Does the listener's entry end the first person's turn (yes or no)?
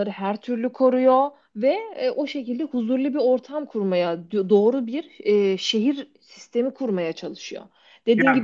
no